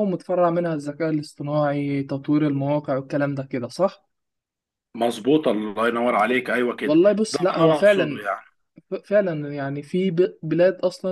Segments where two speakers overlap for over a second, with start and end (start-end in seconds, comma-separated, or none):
6.8-8.2